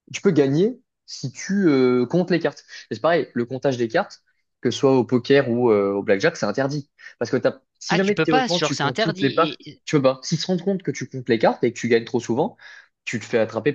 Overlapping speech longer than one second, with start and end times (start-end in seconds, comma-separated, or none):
7.9-9.8